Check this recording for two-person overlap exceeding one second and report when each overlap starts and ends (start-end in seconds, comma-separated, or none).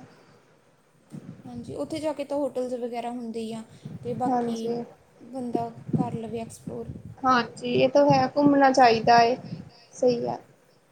none